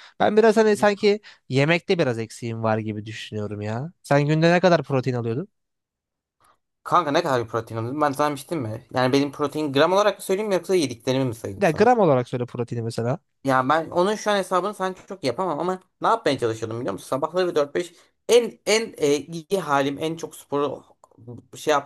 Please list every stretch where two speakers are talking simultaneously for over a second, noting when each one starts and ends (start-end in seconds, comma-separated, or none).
none